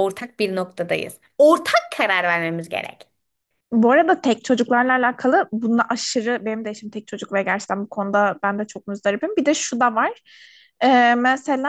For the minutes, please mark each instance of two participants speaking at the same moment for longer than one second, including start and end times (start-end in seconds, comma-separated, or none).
none